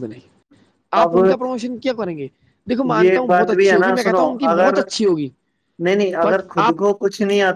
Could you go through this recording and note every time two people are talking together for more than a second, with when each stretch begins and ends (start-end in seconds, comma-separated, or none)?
3.0-4.8